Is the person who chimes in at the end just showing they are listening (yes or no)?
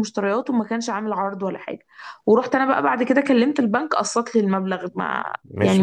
no